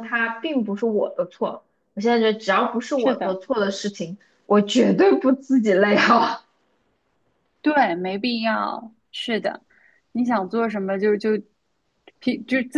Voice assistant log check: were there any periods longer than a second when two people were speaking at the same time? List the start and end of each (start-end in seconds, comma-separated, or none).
none